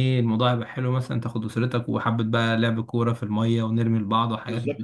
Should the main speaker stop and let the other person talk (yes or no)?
yes